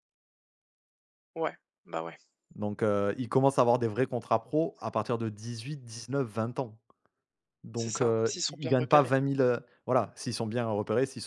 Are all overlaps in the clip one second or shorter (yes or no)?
no